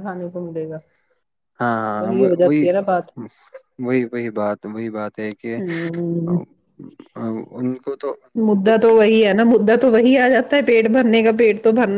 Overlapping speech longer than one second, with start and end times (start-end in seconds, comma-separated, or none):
none